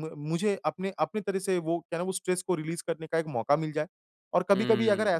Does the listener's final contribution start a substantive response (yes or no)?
no